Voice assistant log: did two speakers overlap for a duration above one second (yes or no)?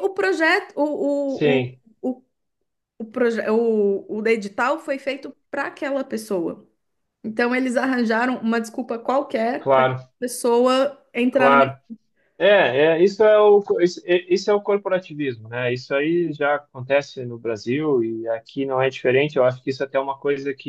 no